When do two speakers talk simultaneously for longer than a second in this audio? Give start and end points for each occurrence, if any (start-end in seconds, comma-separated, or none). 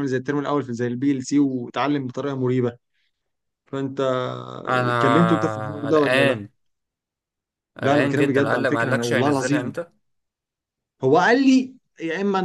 5.0-6.3, 7.8-9.7